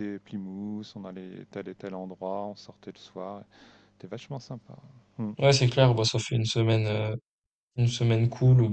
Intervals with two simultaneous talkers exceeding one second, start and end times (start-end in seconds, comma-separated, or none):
none